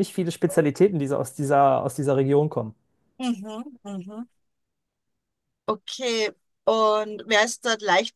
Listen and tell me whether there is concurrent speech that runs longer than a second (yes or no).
no